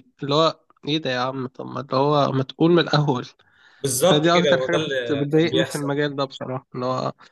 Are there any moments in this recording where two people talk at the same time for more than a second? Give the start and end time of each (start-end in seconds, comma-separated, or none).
4.0-5.9